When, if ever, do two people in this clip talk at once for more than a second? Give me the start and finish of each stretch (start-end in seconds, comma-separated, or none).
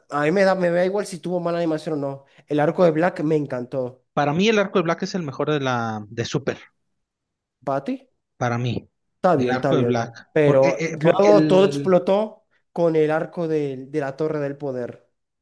9.3-12.0